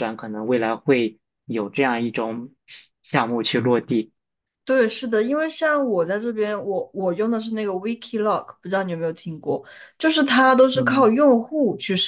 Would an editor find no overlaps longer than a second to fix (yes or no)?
yes